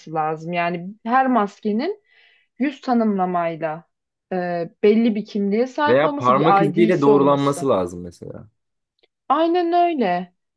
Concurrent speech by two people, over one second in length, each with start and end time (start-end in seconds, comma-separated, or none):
5.9-7.7